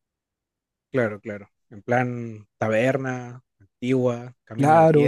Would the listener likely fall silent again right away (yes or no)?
no